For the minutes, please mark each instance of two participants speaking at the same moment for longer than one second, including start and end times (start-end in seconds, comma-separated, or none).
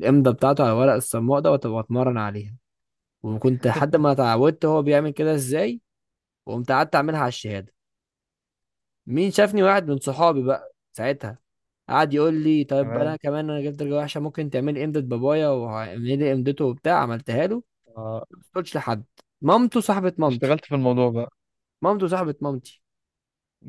none